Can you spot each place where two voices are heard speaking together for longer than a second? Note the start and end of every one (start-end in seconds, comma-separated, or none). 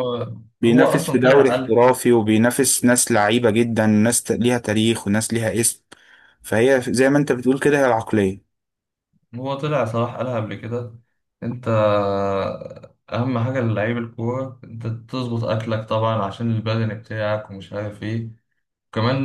0.6-1.8